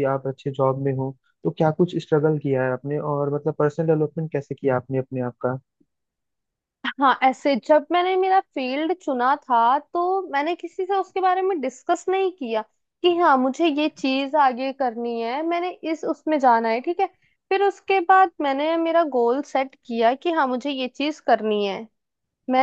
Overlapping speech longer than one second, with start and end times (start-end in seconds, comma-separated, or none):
none